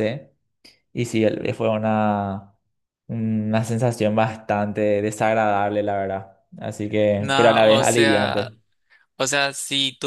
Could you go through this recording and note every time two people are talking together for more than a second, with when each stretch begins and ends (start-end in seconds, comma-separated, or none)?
7.2-8.5